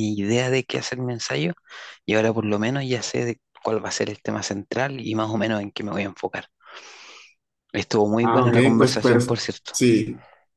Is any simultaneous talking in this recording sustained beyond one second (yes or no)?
yes